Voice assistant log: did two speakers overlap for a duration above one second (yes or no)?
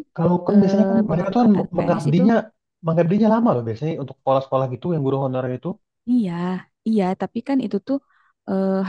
yes